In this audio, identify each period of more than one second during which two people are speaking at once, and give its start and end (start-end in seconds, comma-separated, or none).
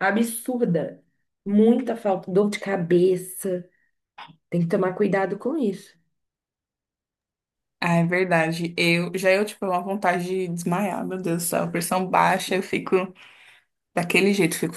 none